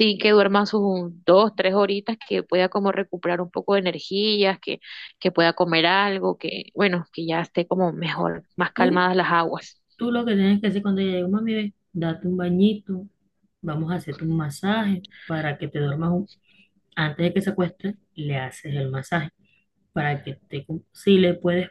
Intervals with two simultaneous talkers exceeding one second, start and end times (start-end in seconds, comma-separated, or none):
none